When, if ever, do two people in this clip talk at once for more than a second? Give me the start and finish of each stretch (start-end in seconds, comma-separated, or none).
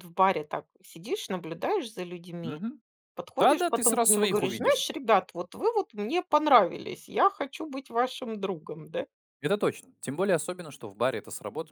3.4-4.9